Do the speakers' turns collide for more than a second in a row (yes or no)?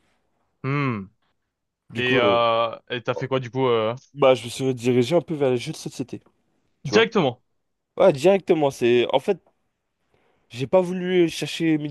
no